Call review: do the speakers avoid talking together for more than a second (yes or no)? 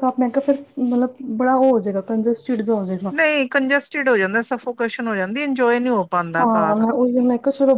yes